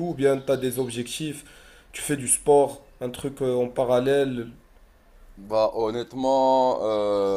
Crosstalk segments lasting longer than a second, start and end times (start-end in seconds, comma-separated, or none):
none